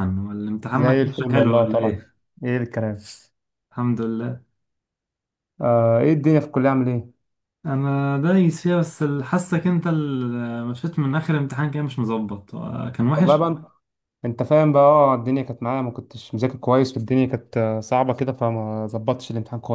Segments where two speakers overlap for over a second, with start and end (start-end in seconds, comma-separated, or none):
0.7-2.0